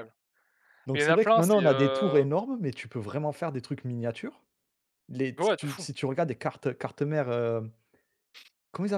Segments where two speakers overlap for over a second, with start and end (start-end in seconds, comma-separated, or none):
0.9-2.2